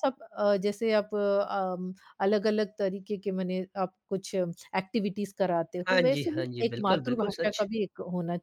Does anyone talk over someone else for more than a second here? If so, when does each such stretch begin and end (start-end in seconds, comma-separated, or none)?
5.9-7.7